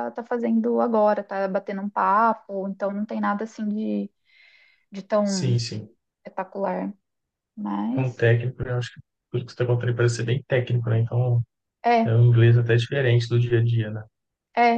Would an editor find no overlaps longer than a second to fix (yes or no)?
yes